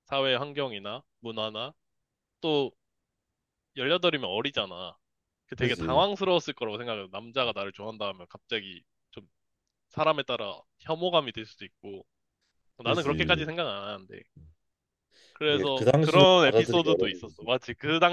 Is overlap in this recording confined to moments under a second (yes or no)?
no